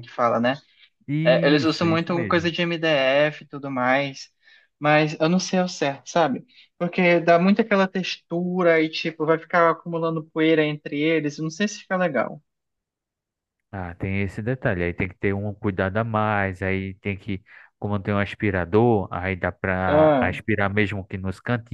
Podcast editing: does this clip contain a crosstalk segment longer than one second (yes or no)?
yes